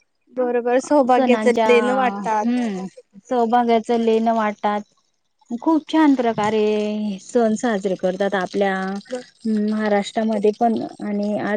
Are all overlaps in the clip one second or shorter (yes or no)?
yes